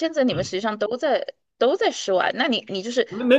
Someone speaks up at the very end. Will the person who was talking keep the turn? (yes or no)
no